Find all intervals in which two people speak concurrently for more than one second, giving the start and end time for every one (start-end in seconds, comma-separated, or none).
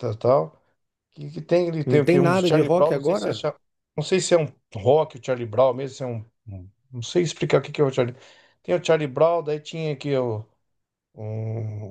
1.8-3.5